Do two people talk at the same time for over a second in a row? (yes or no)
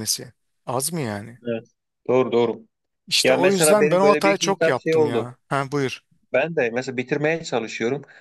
yes